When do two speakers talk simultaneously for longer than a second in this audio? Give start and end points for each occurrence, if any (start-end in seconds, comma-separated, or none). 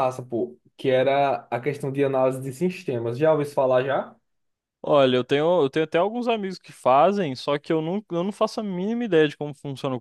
none